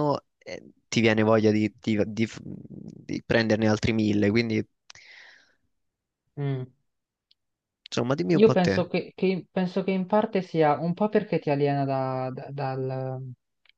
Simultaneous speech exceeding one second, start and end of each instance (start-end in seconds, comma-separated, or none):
none